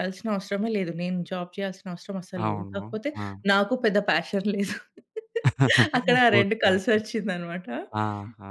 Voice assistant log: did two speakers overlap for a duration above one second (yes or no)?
no